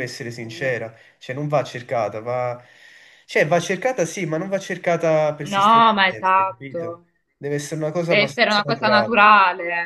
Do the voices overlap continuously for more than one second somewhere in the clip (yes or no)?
yes